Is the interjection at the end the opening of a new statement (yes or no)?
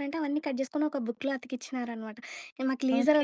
no